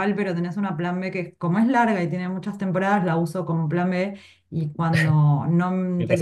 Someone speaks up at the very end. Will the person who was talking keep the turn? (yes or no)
yes